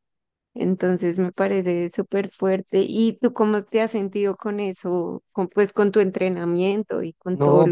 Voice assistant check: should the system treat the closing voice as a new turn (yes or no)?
yes